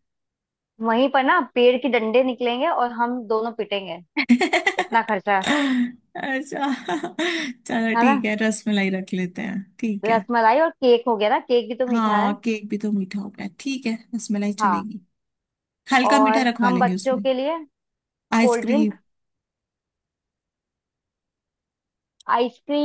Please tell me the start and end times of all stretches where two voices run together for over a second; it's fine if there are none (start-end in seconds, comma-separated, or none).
16.0-17.2